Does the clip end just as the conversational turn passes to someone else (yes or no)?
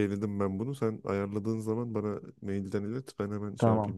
yes